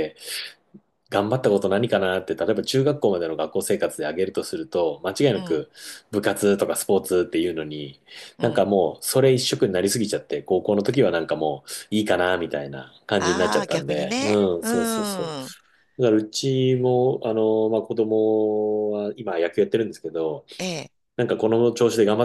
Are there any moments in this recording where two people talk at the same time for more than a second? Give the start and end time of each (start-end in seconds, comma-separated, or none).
13.2-14.7